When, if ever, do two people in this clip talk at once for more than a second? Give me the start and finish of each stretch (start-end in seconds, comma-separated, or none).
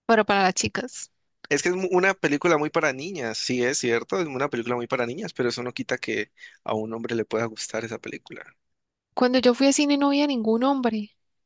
none